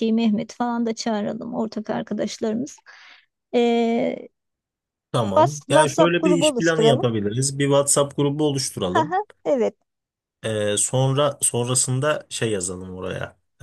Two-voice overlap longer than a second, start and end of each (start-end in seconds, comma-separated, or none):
5.3-7.1